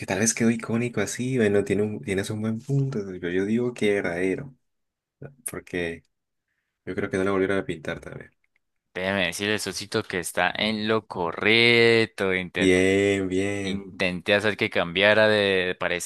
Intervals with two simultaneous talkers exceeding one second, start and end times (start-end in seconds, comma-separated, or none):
none